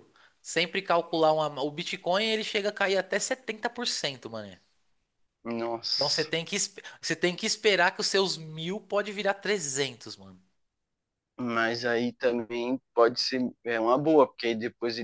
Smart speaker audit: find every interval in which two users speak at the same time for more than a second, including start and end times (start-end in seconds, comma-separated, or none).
none